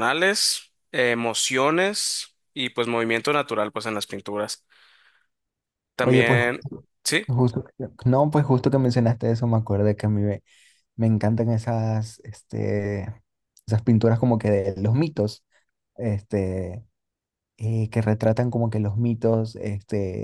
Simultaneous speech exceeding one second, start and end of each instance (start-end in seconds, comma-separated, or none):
none